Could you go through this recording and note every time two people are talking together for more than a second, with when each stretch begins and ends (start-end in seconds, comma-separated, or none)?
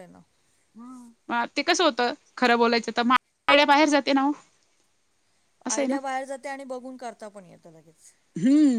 none